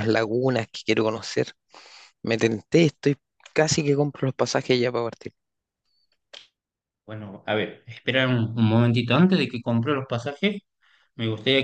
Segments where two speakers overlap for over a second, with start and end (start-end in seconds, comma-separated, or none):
none